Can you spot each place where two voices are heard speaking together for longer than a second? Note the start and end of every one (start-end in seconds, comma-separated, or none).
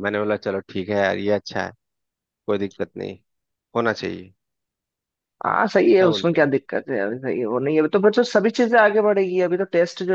none